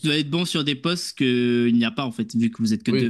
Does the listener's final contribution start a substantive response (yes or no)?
yes